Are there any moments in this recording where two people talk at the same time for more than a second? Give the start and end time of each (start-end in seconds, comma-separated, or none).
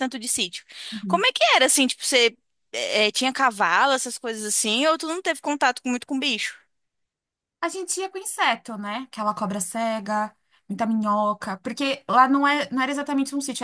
none